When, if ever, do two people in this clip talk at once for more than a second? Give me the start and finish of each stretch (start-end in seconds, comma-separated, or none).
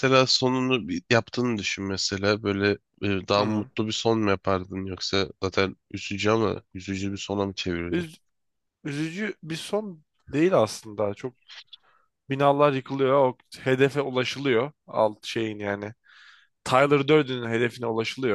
none